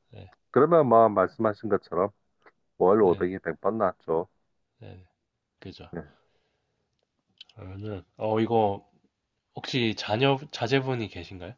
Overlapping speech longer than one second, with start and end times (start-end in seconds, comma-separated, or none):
none